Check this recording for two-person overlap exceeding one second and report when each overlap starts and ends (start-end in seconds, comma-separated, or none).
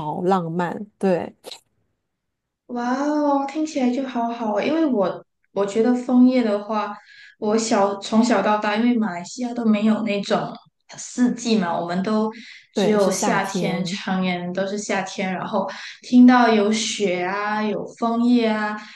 12.7-14.0